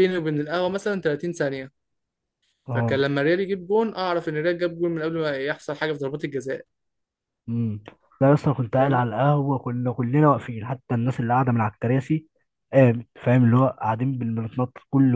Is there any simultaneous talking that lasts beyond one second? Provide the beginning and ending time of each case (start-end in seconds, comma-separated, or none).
none